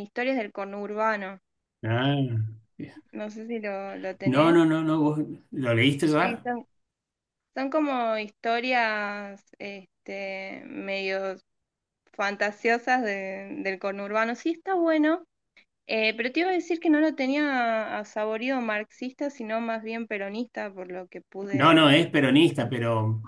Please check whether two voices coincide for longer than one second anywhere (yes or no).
no